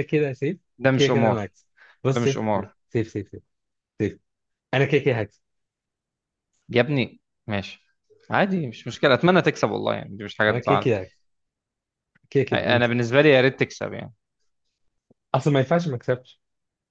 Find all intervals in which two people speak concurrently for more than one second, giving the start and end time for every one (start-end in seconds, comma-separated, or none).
none